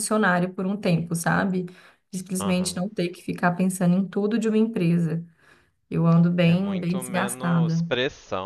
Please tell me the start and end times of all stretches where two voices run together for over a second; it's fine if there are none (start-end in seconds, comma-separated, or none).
6.4-7.8